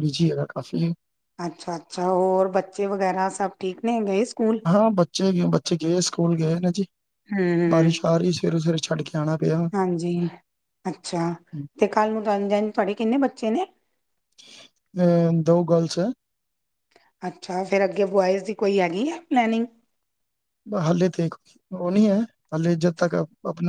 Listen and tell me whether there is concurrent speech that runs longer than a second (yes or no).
no